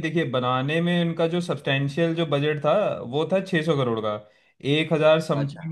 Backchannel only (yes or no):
yes